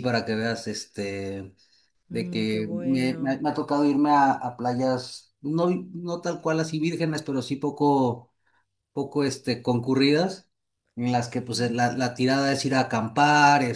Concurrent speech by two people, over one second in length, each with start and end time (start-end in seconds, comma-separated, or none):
2.1-3.4